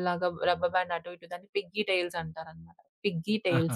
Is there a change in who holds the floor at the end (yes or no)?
no